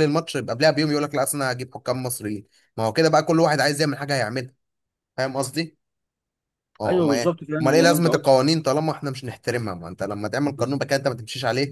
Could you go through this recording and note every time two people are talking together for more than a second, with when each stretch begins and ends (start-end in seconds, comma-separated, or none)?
6.8-8.2